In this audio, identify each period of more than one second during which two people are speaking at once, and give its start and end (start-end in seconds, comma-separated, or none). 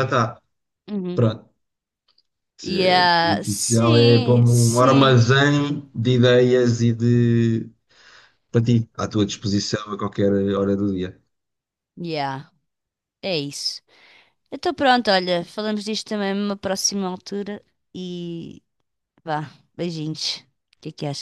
2.7-5.2